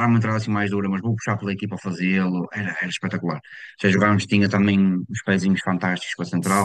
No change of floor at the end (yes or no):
yes